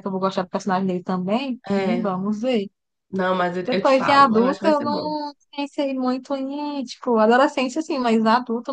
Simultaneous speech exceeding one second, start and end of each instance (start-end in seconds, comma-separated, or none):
3.6-5.1